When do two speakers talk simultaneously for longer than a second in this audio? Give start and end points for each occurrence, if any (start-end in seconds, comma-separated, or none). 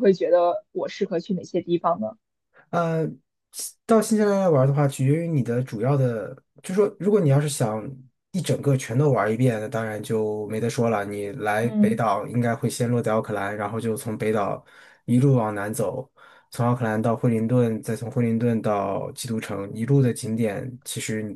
none